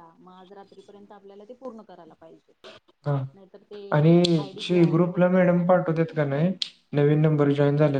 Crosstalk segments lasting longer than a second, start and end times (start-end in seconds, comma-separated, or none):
none